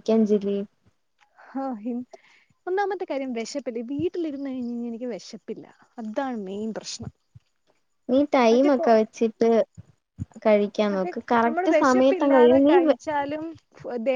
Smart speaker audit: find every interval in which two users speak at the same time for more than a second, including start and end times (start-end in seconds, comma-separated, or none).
10.9-12.7